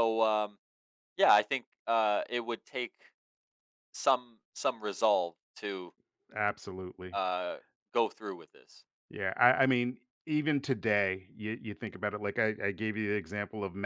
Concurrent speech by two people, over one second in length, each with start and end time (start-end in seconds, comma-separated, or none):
none